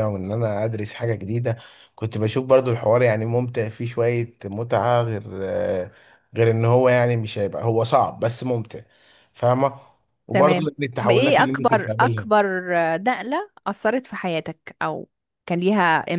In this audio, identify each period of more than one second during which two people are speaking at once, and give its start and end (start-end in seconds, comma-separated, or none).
10.3-12.3